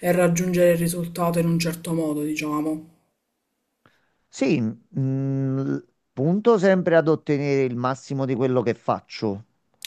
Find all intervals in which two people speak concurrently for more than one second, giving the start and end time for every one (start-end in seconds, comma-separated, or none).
none